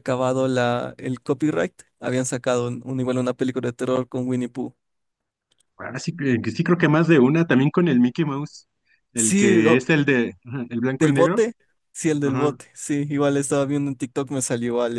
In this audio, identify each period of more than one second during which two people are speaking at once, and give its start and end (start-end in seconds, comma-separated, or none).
none